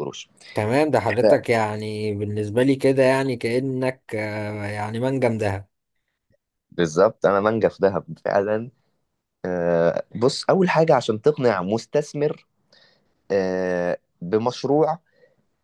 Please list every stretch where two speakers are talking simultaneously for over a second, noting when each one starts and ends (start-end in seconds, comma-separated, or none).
none